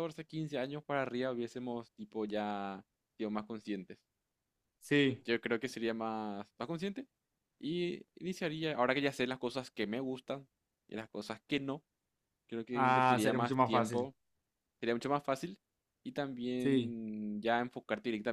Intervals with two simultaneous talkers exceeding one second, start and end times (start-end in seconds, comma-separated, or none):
12.7-14.1